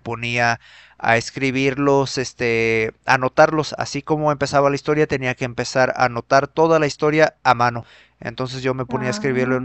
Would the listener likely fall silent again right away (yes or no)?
yes